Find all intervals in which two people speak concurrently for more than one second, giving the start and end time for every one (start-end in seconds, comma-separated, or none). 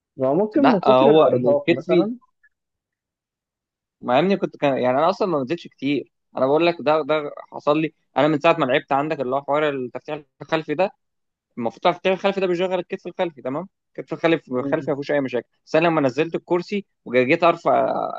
0.6-1.9